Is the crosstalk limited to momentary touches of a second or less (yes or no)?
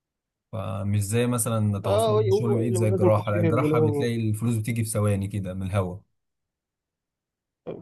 no